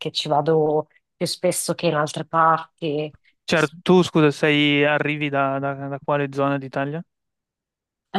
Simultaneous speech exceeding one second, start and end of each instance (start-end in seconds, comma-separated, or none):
none